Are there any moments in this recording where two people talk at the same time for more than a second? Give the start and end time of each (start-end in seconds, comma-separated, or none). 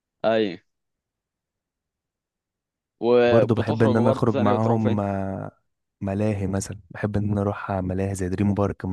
3.2-5.0